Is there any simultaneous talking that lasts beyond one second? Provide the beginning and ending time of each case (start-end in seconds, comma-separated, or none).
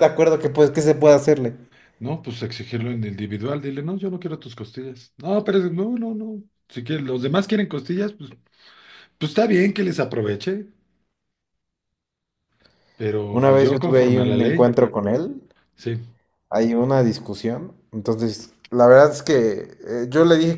13.3-14.7